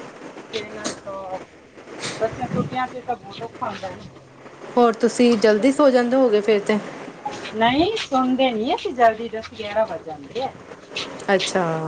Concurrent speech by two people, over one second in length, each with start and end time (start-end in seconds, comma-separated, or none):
none